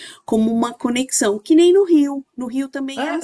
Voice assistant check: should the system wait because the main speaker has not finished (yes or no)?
no